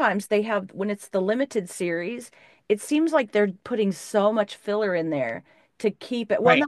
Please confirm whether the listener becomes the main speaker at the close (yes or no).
no